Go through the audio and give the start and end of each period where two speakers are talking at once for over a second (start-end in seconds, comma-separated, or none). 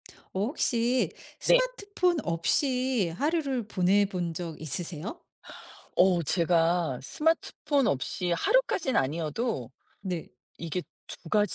none